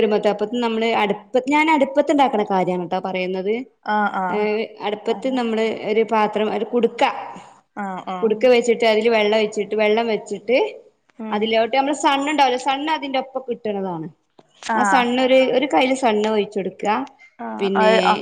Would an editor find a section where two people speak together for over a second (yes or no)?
no